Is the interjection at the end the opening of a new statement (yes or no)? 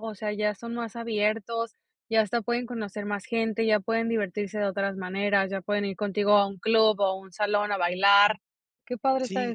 yes